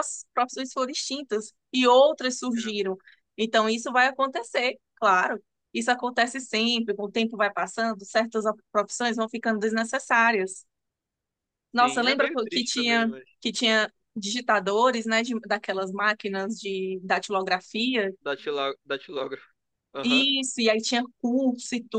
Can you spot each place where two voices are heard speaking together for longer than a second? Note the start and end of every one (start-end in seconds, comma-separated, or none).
11.8-13.2